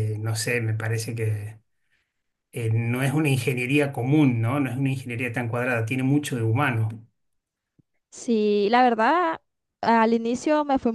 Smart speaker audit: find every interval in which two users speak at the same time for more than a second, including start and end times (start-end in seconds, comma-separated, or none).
none